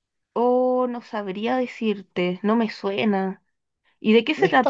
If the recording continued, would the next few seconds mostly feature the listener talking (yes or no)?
yes